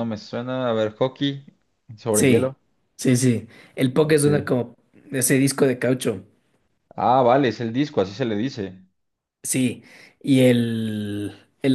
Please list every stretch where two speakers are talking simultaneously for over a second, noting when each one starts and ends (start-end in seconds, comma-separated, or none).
none